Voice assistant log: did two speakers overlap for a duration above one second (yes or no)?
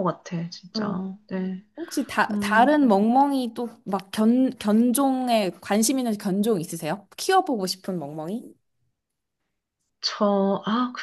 no